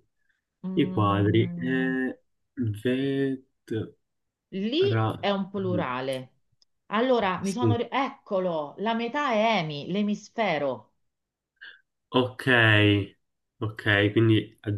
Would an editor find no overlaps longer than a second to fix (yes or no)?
no